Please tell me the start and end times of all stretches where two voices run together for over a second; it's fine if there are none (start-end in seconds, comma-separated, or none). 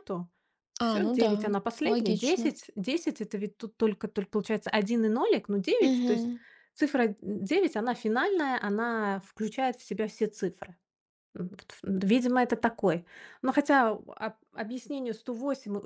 0.9-2.5